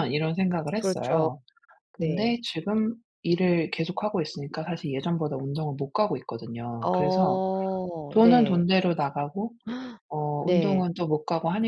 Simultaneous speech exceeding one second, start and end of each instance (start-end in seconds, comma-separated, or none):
none